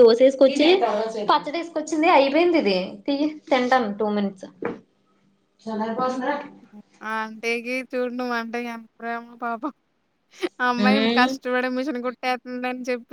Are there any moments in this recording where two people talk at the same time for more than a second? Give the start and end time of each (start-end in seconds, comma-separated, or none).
none